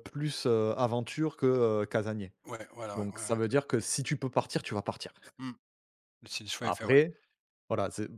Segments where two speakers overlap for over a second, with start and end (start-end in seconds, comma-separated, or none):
none